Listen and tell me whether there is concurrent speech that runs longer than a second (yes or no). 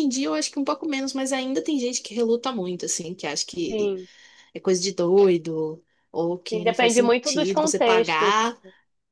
yes